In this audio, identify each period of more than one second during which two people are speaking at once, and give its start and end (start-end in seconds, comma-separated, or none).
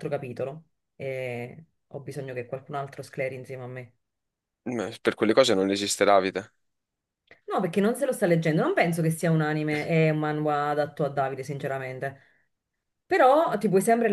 none